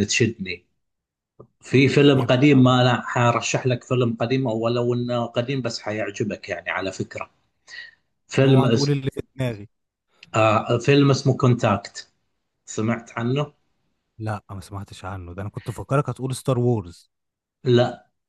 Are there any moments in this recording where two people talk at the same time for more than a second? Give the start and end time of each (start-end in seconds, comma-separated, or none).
none